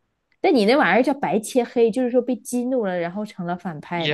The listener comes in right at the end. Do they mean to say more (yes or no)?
yes